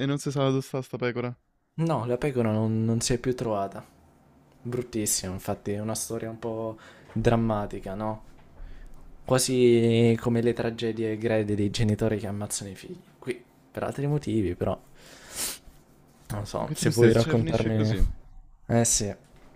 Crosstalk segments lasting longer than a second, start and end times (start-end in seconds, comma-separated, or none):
16.6-17.9